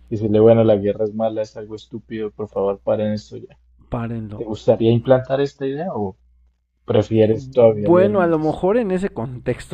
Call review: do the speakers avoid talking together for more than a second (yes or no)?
no